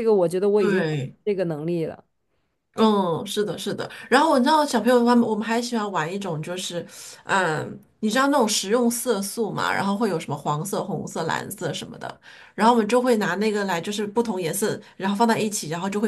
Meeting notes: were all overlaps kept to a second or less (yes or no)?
yes